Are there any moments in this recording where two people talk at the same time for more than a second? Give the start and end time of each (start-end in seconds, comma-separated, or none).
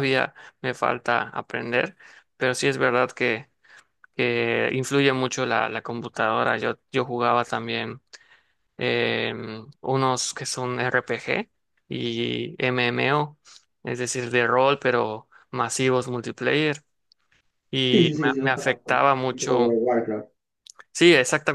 17.9-19.8